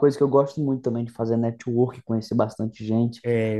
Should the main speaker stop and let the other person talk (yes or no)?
no